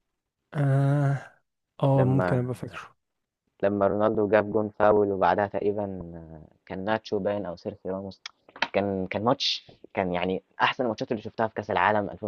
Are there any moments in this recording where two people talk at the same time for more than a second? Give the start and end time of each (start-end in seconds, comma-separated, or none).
none